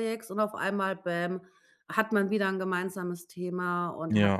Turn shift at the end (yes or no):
no